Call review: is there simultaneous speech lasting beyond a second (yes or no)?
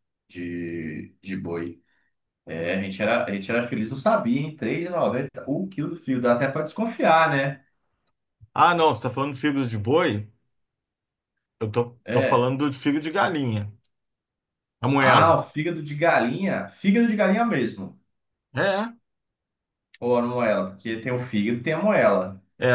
no